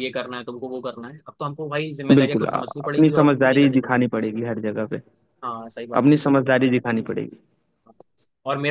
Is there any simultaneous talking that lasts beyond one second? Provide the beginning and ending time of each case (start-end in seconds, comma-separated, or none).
2.1-4.1